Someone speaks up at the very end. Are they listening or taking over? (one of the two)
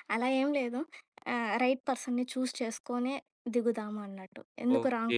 taking over